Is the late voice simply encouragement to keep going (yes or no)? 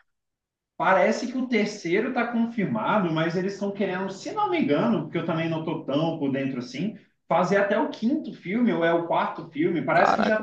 yes